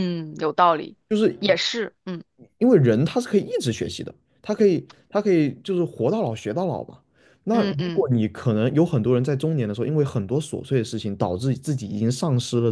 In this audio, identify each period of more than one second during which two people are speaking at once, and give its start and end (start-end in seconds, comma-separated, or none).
none